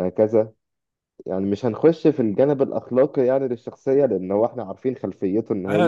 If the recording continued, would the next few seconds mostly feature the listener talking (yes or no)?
yes